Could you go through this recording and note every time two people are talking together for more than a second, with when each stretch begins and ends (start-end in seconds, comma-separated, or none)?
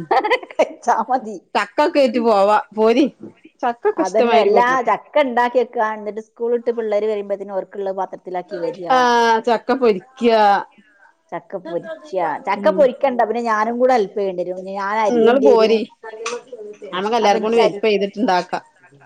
none